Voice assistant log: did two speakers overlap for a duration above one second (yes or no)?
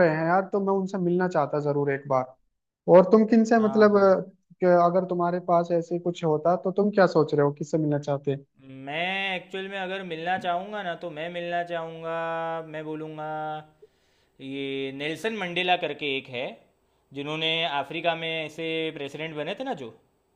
no